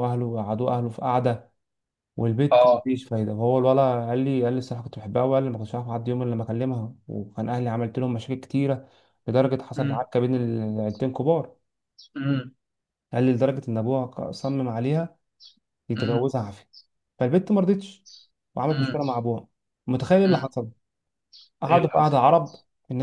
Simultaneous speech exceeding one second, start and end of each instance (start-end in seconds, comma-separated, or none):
none